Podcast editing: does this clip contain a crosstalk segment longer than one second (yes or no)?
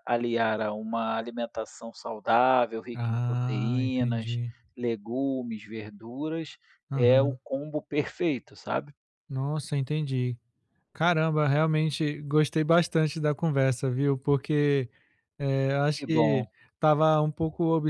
yes